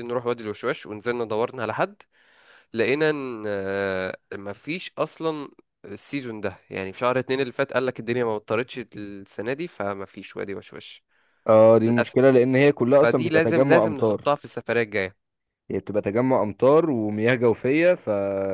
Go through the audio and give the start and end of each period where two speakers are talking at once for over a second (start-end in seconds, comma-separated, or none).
13.0-14.3